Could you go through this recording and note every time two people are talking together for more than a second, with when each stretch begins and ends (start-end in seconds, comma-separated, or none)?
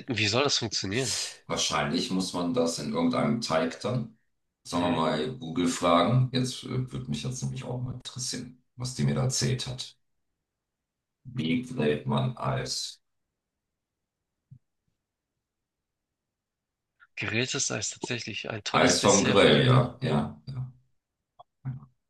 18.7-20.0